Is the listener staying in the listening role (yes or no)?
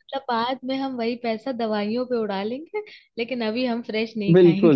no